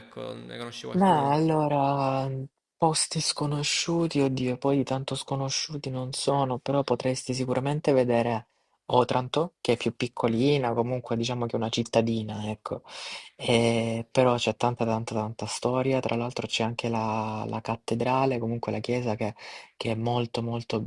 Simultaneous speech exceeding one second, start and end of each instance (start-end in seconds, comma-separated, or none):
none